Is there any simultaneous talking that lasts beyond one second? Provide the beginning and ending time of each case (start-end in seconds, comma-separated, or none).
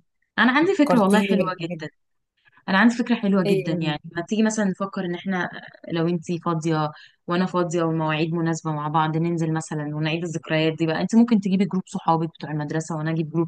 0.6-1.9